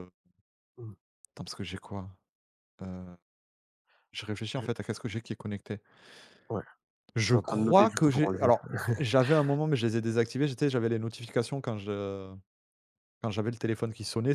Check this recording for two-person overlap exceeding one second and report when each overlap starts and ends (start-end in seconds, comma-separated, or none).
7.2-8.9